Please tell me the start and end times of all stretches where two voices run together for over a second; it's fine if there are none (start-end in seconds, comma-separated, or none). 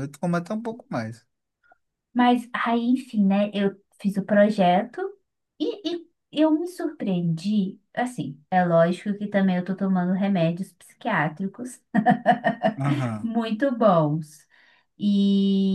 none